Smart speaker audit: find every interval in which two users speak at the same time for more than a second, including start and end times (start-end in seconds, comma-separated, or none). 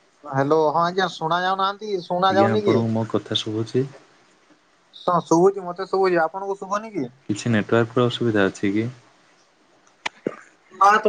none